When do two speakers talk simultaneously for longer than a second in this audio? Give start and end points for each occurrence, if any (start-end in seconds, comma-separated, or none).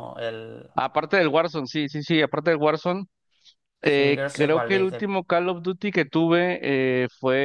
3.8-5.1